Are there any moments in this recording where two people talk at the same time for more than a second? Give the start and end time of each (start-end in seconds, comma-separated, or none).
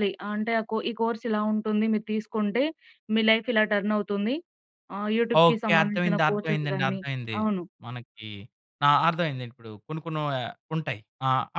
5.4-7.0